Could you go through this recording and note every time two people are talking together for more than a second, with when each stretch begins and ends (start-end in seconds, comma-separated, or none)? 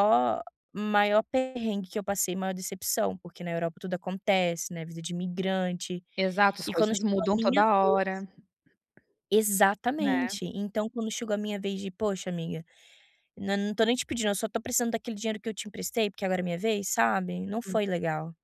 6.7-8.2